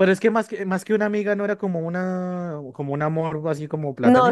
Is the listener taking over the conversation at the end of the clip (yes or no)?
yes